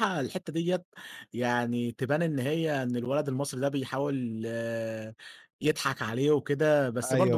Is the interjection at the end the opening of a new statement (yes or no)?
no